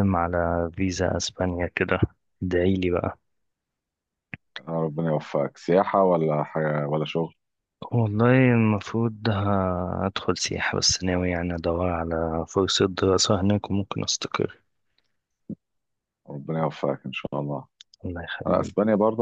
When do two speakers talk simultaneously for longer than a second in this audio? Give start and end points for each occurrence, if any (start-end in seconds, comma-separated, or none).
none